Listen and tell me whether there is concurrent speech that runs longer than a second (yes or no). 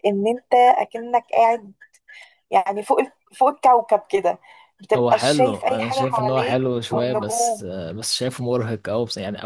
yes